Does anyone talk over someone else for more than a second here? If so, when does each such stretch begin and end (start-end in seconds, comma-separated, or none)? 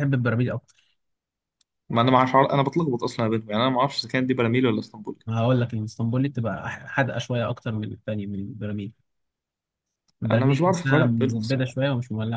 10.3-11.8